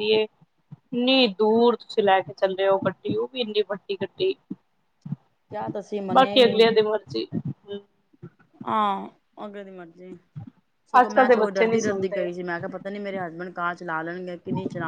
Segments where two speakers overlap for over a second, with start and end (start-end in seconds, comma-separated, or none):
11.0-12.3